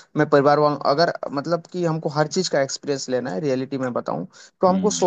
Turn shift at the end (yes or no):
no